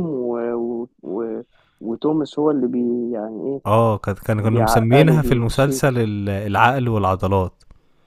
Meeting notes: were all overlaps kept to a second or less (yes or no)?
no